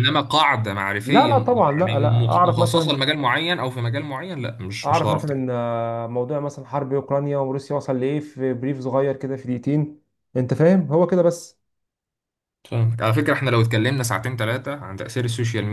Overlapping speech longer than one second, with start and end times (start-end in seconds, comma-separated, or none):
1.0-3.0